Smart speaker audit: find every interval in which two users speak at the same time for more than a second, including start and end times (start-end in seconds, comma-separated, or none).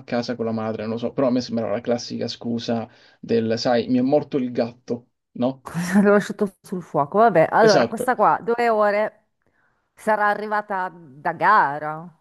none